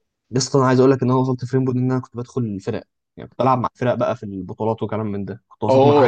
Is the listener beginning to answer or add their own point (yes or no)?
yes